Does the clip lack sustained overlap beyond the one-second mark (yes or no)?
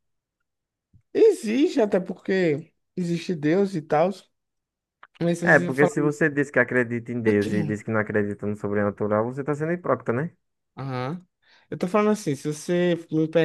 yes